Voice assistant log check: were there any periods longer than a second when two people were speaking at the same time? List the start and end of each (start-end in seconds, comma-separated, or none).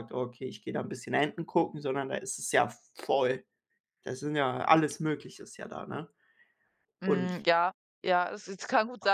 none